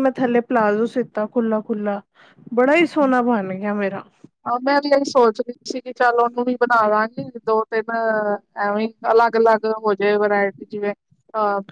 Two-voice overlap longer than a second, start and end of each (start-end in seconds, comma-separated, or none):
none